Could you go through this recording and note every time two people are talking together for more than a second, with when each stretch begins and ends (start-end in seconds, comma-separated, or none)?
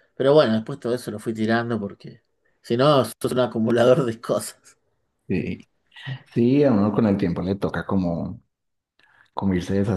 none